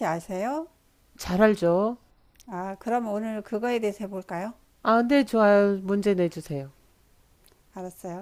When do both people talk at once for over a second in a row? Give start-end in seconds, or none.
none